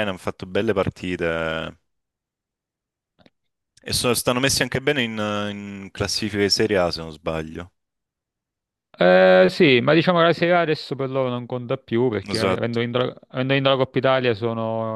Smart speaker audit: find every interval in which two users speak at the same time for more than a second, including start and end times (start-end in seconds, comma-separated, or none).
none